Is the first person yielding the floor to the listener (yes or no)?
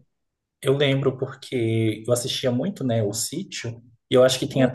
no